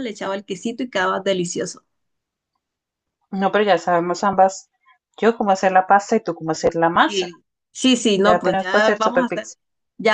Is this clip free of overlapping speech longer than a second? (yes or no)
no